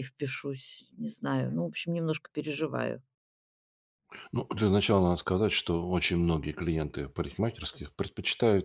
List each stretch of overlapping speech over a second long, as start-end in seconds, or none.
none